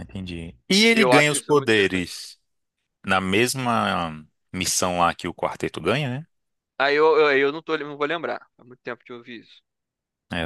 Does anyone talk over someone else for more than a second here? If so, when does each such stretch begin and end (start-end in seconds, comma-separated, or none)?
0.9-2.1